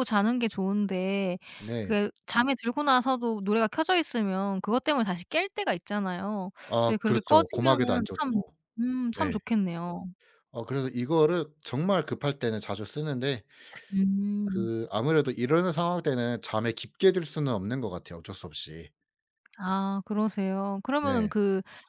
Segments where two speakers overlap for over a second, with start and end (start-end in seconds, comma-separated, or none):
6.7-8.4